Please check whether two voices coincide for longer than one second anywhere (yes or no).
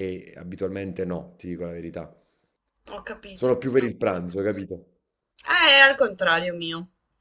no